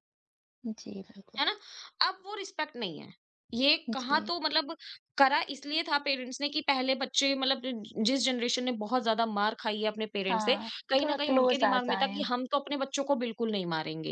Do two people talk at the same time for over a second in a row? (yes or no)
yes